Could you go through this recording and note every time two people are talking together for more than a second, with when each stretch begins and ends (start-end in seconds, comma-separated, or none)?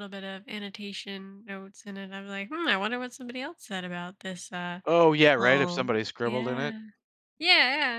5.4-6.7